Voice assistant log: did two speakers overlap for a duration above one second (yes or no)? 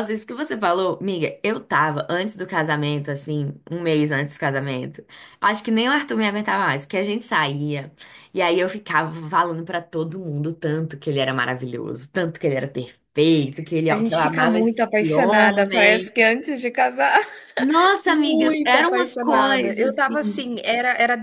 yes